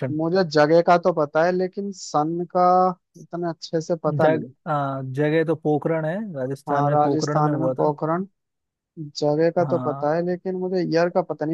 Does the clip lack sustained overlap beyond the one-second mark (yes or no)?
no